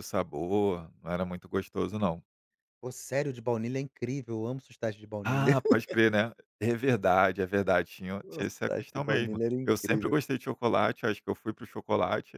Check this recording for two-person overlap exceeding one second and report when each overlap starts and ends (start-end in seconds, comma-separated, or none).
8.2-10.2